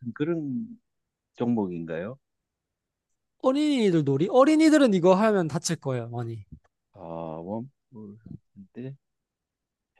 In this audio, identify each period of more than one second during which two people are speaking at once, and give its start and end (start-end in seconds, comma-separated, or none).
none